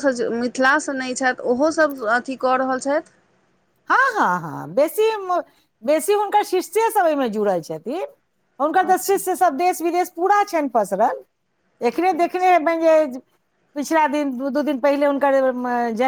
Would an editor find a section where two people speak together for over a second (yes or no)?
no